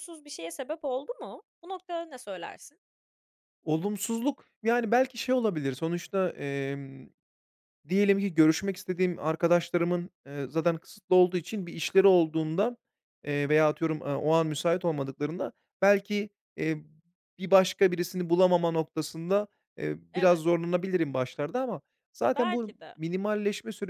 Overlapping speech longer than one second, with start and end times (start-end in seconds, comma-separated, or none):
none